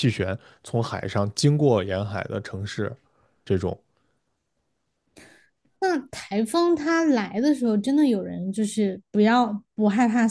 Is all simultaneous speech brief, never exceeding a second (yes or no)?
yes